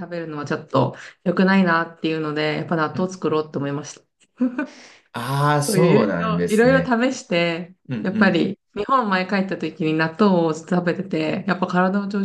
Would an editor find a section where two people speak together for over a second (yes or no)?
yes